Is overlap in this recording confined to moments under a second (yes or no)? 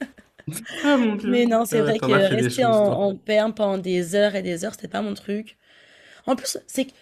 no